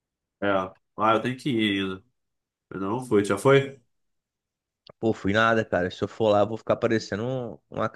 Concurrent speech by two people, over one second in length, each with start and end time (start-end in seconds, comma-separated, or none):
none